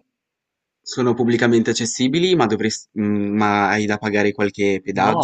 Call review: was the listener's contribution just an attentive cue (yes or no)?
no